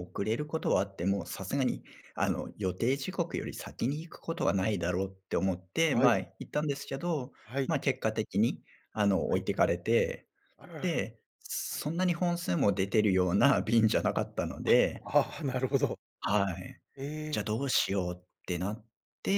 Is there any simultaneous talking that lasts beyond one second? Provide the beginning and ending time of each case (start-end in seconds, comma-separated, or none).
none